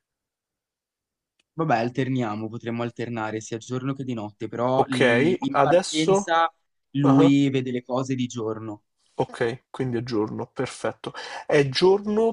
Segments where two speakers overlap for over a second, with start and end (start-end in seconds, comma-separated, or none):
4.8-6.3